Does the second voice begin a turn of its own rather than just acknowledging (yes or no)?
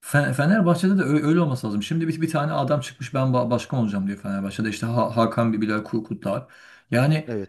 no